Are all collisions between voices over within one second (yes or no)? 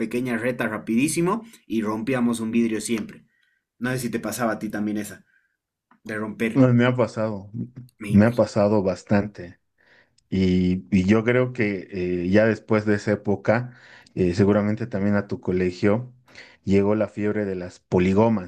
yes